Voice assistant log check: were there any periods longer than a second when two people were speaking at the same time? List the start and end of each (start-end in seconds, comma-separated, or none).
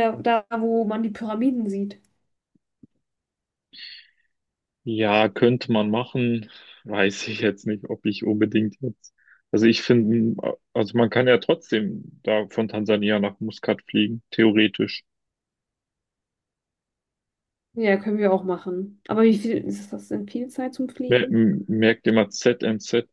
none